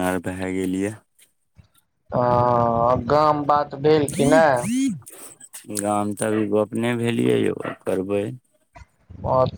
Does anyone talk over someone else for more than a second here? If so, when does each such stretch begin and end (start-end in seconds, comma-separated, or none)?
none